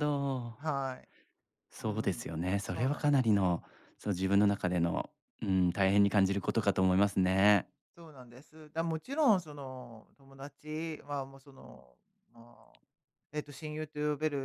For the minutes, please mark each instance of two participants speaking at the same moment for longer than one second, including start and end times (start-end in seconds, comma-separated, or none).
1.8-3.4